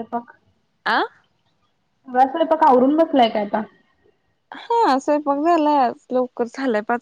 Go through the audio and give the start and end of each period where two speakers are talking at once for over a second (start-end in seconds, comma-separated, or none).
none